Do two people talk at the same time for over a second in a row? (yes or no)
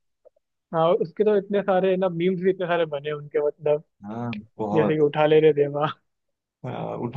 no